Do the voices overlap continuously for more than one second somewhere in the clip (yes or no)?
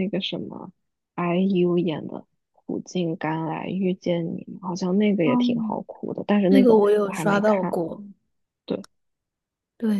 yes